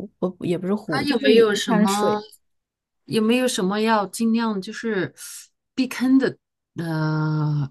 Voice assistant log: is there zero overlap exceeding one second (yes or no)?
no